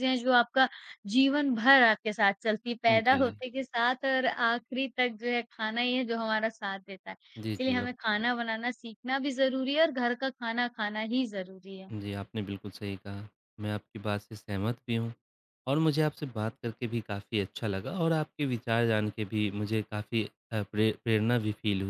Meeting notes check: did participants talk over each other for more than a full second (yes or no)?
no